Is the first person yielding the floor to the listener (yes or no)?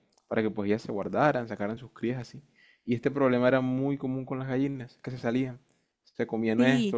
no